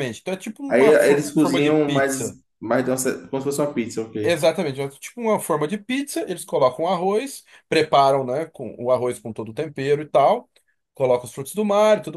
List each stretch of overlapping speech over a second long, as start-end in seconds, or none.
0.7-2.4